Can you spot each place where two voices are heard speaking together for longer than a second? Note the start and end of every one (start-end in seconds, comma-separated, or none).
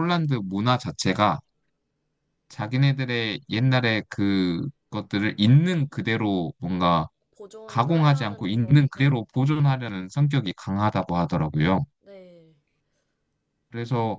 7.7-9.3